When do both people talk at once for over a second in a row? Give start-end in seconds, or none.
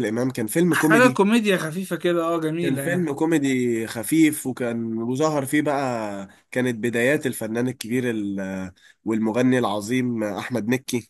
none